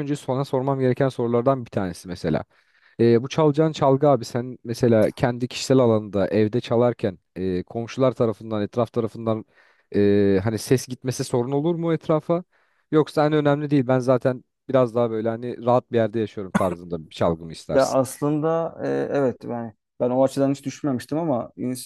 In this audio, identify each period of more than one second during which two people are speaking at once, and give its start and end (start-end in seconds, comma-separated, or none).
none